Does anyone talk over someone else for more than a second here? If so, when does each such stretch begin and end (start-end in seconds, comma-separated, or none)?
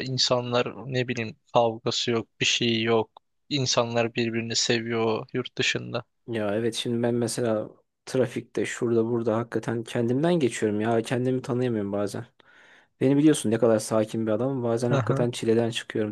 none